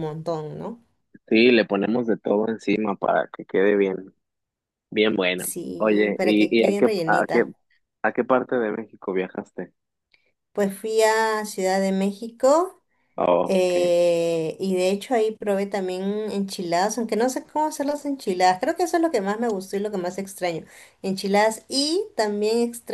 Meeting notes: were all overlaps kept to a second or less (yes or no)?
no